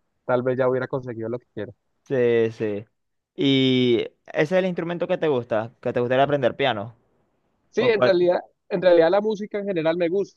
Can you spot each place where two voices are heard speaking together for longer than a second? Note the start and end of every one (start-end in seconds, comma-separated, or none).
none